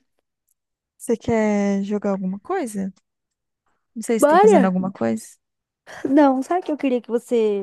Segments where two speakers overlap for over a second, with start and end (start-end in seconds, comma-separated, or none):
none